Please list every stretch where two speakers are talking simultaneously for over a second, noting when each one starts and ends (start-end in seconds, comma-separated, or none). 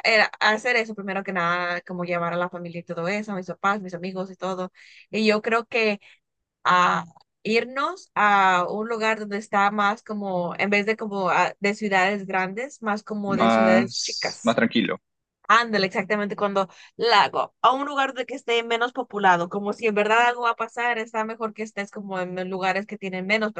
13.2-14.6